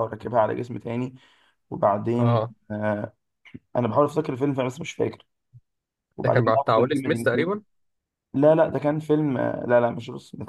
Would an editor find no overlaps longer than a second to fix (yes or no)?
no